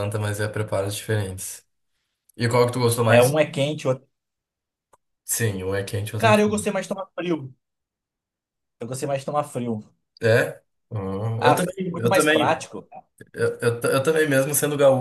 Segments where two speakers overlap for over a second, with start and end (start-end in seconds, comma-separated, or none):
11.4-12.7